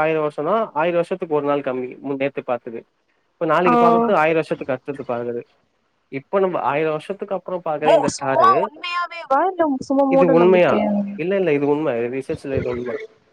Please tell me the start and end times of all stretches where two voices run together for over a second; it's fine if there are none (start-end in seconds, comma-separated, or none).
none